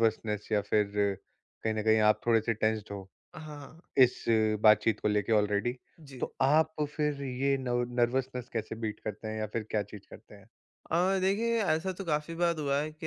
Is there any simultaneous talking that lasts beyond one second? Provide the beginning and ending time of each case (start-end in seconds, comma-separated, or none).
none